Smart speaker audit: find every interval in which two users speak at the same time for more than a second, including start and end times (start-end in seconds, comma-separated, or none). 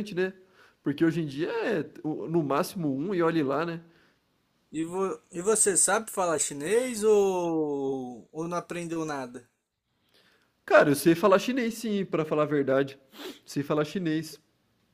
none